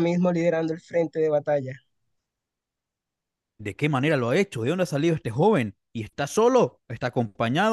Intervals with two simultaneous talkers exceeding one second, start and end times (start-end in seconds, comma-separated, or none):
none